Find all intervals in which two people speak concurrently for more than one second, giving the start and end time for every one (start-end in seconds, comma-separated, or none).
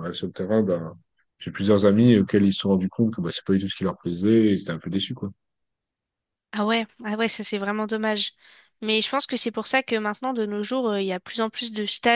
none